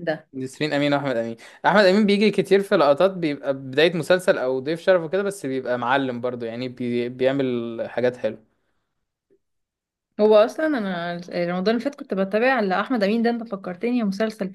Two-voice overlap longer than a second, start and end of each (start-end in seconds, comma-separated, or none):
none